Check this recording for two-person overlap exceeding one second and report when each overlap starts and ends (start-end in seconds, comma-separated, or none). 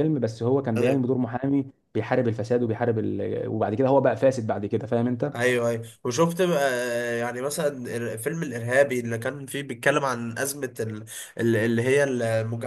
none